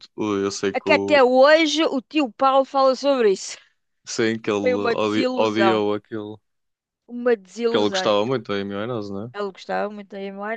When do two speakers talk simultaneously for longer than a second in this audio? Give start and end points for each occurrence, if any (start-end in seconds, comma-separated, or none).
4.6-5.8